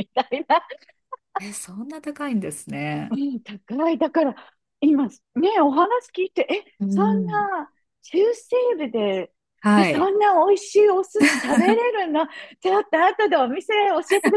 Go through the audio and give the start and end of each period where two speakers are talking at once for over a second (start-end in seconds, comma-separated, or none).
none